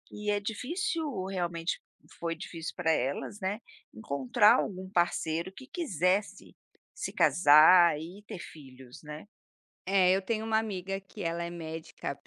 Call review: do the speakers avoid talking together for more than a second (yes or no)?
yes